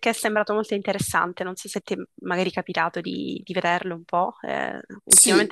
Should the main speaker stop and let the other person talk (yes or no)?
yes